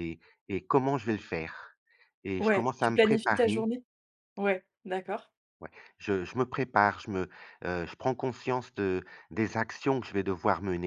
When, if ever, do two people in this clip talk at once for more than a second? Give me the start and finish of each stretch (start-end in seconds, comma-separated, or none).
2.4-3.7